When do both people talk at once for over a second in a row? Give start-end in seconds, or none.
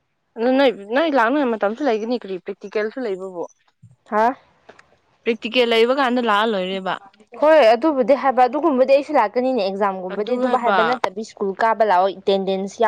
none